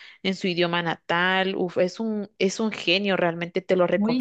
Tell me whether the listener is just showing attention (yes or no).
no